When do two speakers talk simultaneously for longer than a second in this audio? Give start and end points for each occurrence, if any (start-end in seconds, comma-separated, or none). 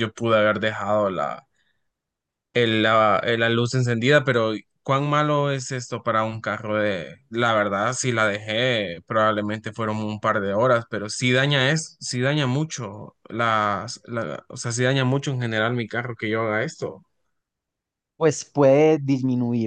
none